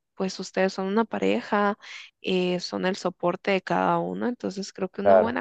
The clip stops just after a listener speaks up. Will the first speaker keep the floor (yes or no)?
yes